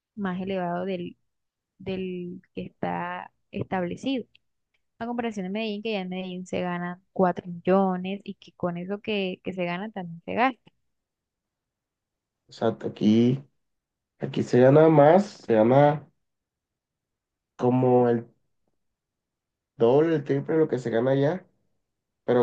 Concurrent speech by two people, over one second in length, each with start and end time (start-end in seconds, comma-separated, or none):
none